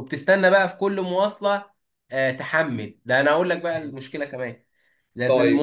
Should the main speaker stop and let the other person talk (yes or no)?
no